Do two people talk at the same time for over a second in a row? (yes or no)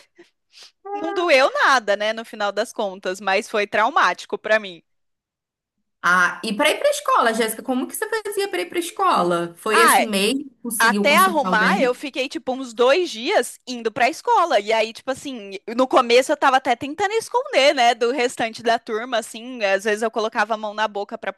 yes